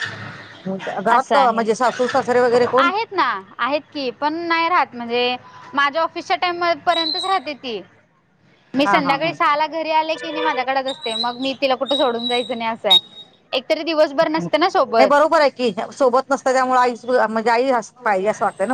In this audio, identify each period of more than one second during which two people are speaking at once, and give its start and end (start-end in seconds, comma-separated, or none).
none